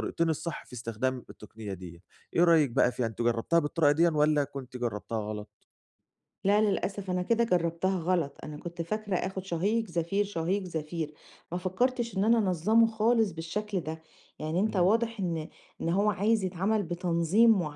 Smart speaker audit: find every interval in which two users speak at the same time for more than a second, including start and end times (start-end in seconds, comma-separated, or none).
none